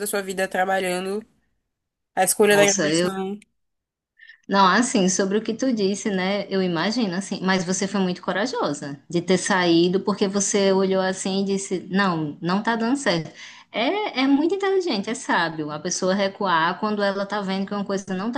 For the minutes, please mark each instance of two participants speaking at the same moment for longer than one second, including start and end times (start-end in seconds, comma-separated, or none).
none